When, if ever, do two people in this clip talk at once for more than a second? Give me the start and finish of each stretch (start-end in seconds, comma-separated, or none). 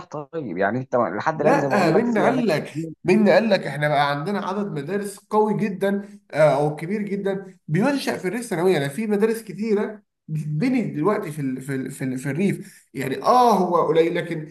1.4-2.9